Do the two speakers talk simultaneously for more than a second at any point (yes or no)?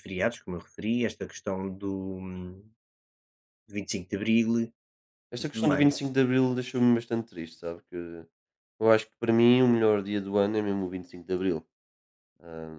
no